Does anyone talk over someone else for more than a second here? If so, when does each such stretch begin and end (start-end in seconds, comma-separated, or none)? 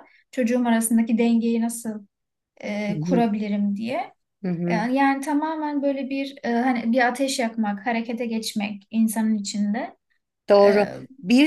none